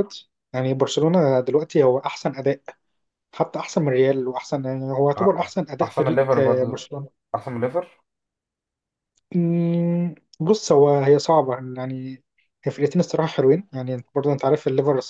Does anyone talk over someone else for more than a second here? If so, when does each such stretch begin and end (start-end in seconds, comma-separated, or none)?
5.2-6.9